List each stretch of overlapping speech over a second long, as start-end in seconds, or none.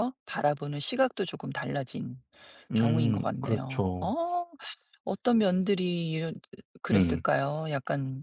2.7-4.1